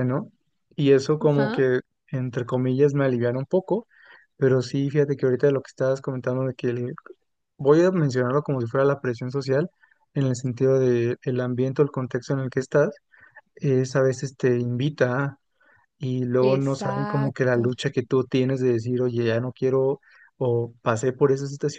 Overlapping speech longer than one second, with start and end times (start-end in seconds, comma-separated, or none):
16.4-17.7